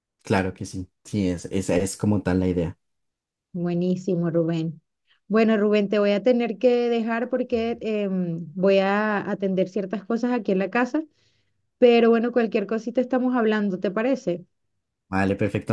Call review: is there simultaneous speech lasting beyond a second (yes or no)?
no